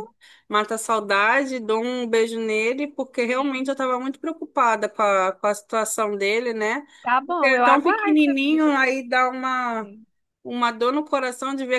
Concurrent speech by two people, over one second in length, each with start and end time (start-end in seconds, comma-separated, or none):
7.2-8.7